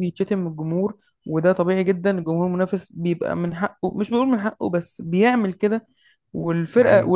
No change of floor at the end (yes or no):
yes